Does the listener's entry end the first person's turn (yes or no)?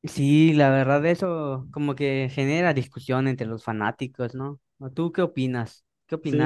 yes